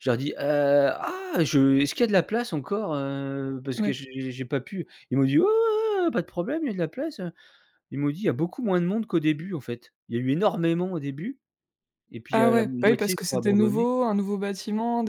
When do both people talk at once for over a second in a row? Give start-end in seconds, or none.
12.3-13.8